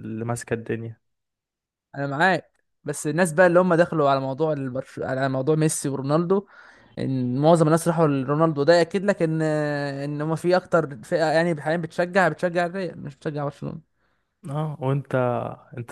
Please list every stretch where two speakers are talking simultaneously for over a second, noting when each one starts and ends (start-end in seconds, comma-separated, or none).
none